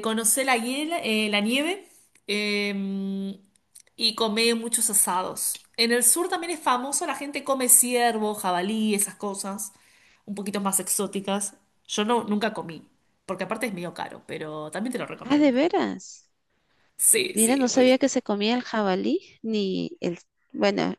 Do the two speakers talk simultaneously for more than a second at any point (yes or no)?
no